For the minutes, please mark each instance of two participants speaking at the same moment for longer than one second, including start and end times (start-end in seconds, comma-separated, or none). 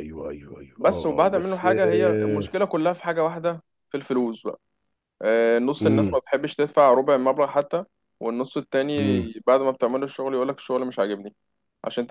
0.8-2.6